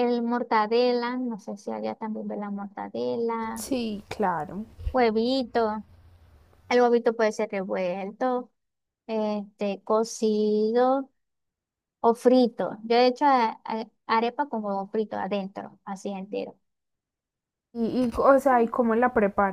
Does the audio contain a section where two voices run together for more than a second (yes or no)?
no